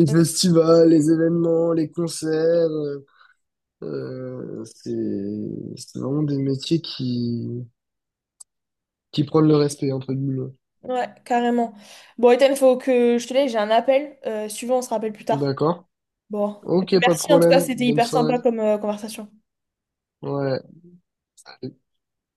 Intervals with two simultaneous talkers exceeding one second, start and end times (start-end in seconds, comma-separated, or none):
17.0-18.4